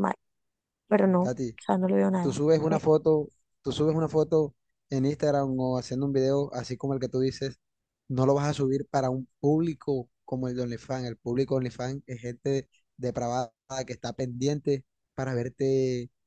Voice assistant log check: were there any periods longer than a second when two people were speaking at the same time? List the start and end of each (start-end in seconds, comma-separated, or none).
none